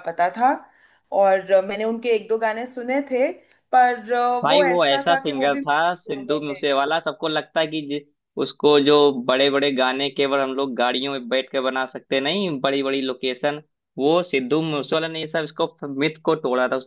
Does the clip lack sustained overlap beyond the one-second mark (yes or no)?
no